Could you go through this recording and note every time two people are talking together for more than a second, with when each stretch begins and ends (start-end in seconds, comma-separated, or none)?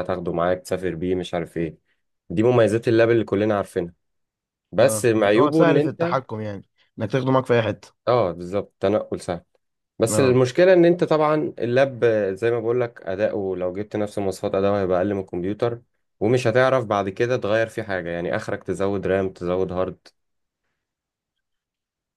4.8-6.2